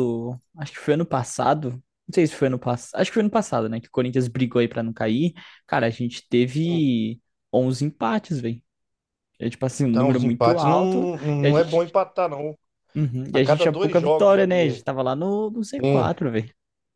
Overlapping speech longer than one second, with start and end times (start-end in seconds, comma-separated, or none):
9.9-11.9, 13.3-14.8